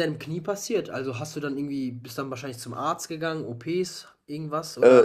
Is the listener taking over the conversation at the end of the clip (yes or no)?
yes